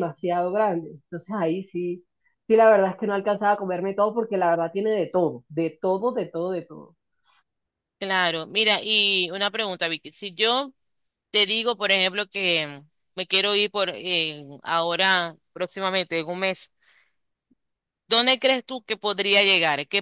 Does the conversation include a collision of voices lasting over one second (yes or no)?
no